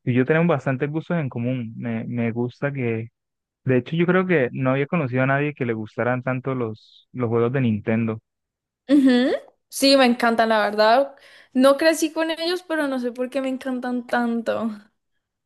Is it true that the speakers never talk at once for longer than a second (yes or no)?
yes